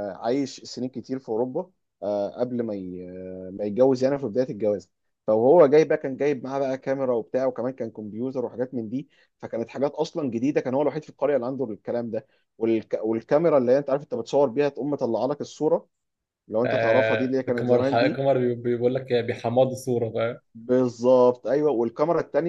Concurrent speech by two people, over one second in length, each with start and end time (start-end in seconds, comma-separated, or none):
16.6-18.2